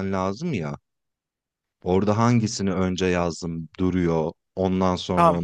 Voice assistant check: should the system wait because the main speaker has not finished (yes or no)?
no